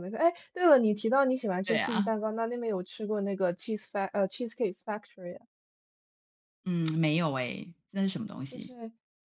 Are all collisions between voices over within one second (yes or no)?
yes